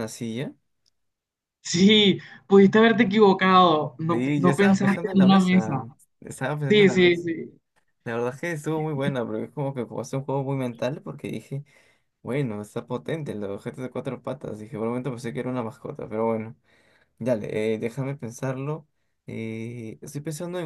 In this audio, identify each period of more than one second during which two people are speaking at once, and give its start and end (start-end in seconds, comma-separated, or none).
4.1-5.7